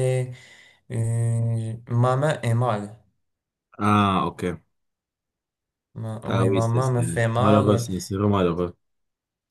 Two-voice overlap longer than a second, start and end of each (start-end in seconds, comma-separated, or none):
6.3-7.9